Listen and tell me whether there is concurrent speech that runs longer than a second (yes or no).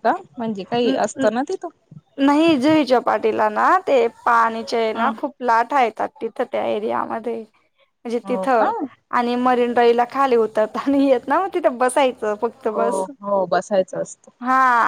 no